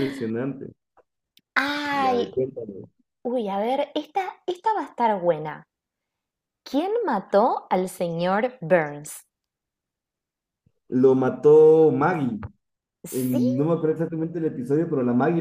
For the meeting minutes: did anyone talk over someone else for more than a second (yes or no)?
no